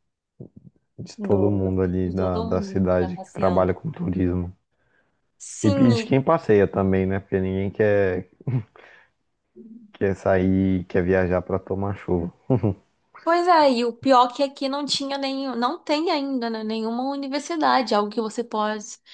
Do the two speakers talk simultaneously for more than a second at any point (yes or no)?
yes